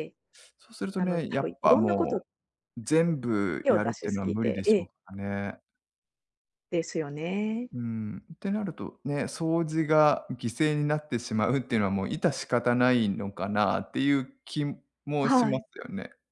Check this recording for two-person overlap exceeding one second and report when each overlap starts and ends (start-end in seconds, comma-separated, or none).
0.9-2.2, 3.6-4.9